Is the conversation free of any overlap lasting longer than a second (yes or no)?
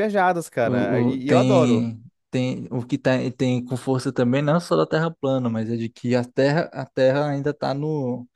no